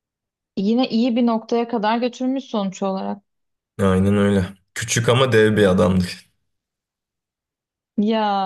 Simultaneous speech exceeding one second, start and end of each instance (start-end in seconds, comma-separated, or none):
none